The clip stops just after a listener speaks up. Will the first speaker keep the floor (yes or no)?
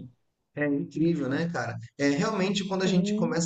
yes